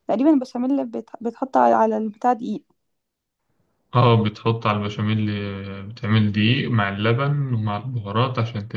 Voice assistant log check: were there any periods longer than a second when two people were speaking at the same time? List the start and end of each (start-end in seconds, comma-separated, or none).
none